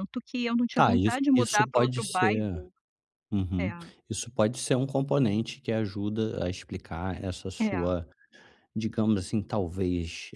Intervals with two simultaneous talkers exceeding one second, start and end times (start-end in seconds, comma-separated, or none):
0.7-2.6